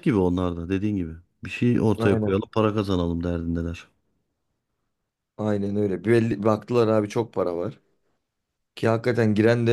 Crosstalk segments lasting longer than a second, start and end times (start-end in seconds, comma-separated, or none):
none